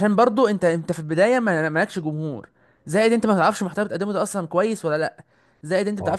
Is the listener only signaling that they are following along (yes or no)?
yes